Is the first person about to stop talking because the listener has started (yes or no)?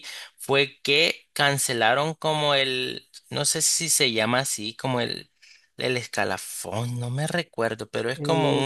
yes